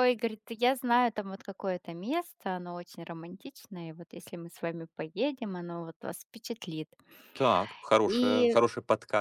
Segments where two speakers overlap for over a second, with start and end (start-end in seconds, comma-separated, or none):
none